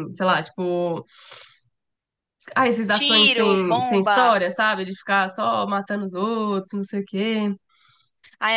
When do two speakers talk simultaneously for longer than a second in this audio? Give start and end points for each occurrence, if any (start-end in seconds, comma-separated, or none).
2.9-4.4